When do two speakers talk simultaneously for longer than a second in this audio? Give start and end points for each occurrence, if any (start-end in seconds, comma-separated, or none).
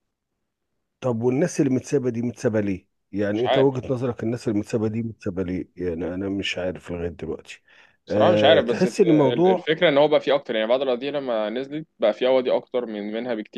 8.1-9.7